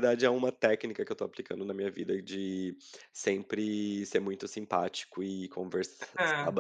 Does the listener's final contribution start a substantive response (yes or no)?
no